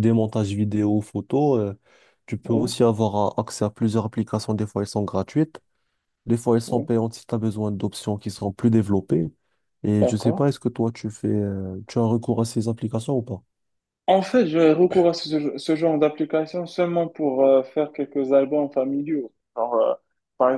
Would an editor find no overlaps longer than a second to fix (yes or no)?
yes